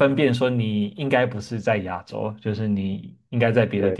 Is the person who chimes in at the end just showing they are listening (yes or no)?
yes